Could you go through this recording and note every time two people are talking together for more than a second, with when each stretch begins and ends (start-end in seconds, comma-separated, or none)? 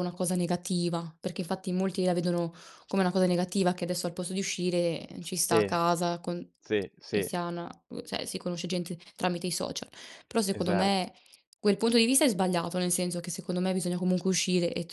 none